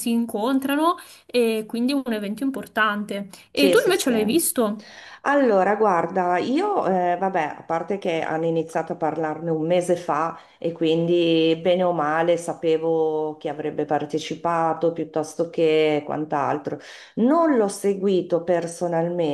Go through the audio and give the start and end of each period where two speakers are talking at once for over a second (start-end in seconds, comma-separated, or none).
none